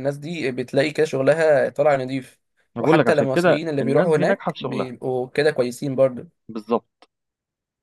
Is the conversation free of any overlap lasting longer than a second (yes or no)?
no